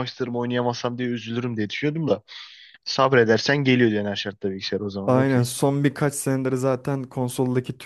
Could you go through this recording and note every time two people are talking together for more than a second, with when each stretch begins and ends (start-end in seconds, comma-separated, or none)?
none